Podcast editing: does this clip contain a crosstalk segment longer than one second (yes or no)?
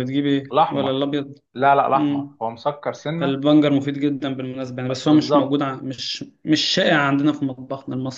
no